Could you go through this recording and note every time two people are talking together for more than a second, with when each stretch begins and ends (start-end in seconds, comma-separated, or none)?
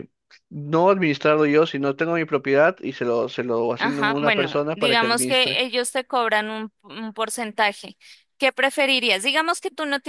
3.8-5.6